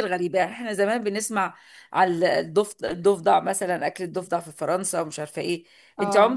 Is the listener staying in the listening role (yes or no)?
yes